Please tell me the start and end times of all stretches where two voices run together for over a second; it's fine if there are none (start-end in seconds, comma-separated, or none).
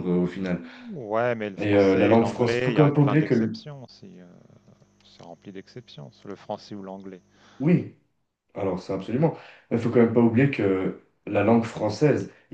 1.6-3.6